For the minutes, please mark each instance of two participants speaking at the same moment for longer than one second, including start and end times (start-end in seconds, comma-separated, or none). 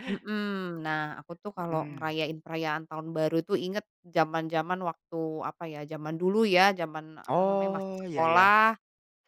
7.3-8.5